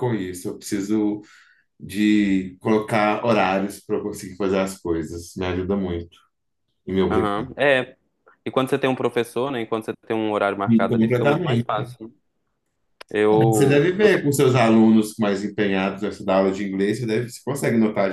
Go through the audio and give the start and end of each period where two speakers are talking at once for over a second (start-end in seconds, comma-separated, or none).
10.7-11.9